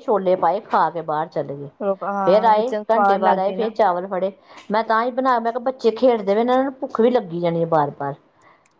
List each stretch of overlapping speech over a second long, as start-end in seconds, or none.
2.2-3.7